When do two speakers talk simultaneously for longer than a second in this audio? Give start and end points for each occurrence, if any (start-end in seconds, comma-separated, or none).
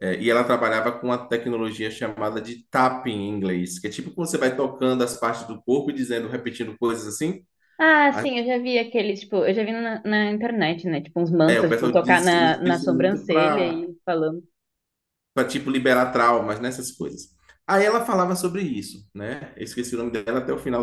11.5-13.9